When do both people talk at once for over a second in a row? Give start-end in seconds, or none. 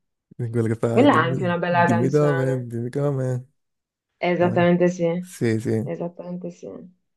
0.9-2.7